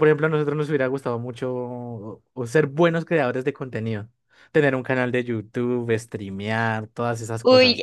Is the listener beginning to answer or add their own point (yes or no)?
yes